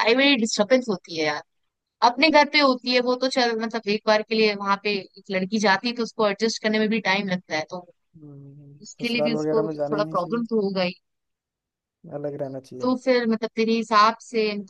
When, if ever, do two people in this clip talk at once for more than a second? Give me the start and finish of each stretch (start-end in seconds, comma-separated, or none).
9.0-10.4